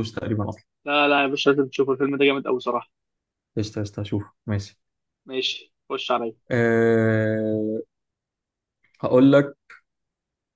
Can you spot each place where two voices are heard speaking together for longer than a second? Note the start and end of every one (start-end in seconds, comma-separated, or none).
none